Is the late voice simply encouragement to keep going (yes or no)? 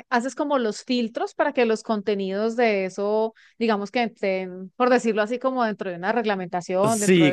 no